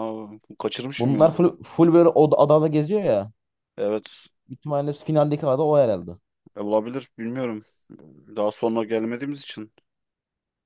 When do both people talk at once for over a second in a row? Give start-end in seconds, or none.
none